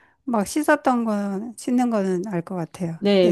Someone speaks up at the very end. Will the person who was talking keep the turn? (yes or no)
no